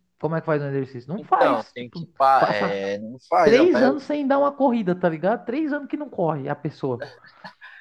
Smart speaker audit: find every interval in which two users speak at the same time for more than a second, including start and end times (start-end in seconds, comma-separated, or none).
1.2-2.8